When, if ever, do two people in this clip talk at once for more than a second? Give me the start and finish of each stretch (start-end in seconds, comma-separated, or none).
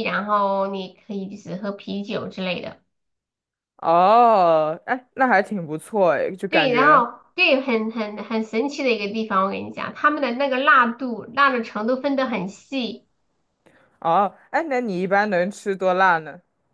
none